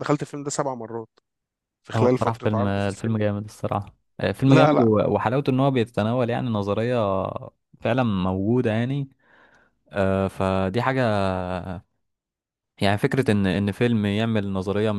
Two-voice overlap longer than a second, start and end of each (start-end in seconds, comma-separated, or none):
1.9-3.2